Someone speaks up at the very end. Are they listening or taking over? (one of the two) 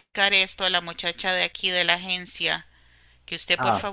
listening